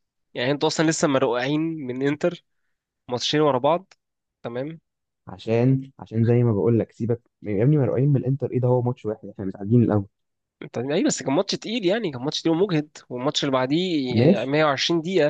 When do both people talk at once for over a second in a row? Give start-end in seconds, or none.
none